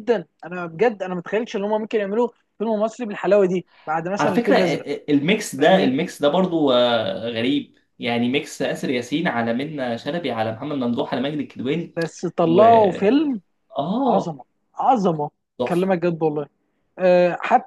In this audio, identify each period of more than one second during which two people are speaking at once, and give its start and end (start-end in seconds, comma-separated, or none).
none